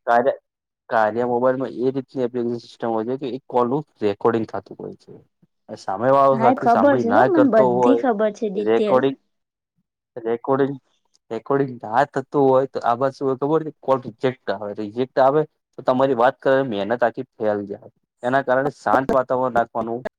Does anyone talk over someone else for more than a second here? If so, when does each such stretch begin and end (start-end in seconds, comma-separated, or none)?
6.4-9.0